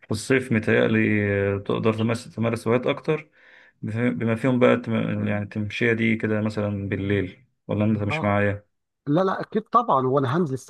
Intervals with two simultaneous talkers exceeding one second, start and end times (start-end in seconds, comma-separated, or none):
none